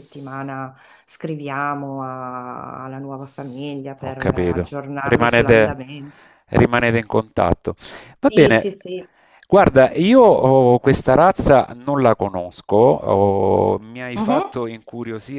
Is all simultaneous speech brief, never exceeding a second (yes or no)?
no